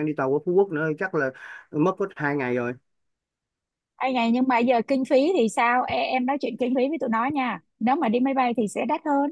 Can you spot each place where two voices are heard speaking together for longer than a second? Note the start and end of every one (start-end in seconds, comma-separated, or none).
none